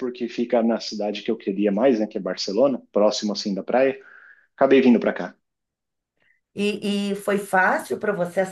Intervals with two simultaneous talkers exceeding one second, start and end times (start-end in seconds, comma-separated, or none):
none